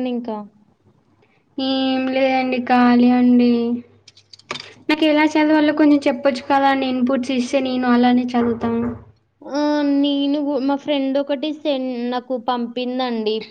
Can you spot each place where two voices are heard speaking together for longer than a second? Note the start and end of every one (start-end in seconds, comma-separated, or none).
none